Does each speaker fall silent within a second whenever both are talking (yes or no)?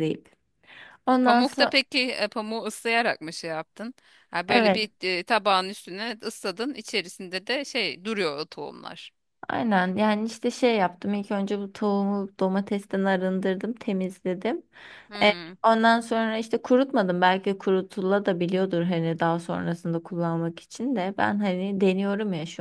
yes